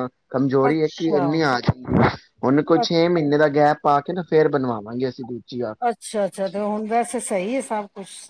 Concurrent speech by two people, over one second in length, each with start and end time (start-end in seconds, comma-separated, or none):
none